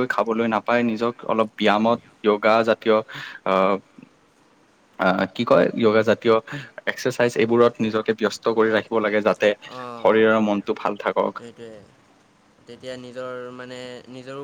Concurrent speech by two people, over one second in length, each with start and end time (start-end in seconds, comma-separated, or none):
none